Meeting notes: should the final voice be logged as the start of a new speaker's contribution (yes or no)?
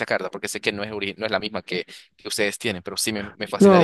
yes